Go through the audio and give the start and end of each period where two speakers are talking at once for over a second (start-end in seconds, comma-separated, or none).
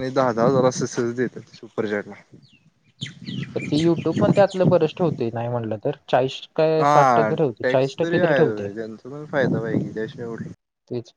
6.8-8.7